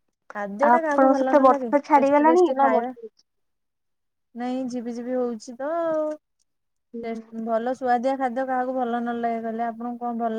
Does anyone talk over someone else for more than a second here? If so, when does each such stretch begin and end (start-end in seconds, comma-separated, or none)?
0.7-2.9